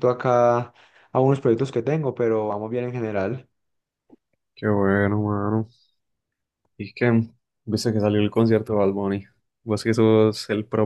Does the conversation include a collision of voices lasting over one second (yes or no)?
no